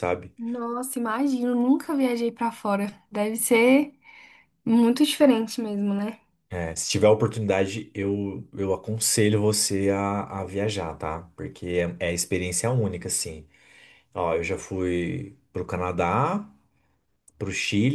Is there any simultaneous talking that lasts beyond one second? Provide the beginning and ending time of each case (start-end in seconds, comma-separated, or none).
none